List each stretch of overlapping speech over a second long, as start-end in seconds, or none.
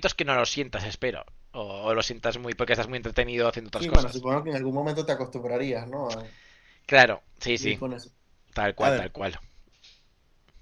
none